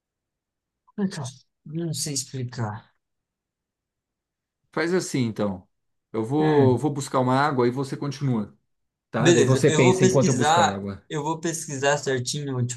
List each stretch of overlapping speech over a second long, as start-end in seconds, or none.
9.2-11.0